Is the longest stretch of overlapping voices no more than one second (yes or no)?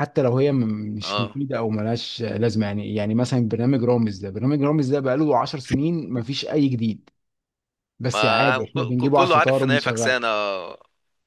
no